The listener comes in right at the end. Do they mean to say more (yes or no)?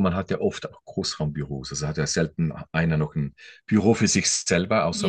no